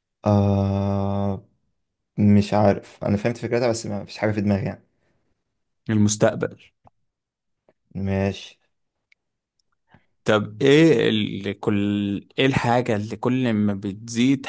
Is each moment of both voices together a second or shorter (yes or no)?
yes